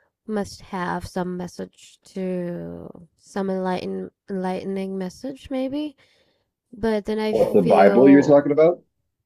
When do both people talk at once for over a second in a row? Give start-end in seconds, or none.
7.3-8.6